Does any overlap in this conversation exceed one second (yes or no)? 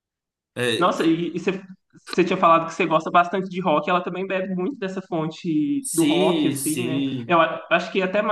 yes